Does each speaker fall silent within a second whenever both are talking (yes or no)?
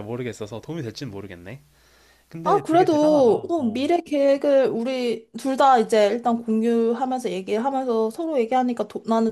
no